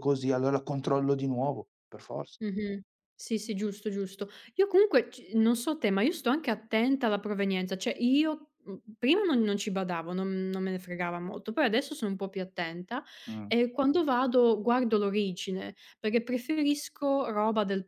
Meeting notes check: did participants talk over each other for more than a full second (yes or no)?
no